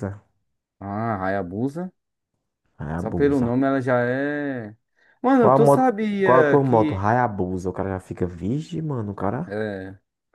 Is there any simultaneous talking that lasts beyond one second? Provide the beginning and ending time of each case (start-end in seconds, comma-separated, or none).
5.4-7.0